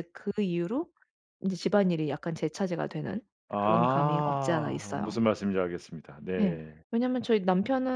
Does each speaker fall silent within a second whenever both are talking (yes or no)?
no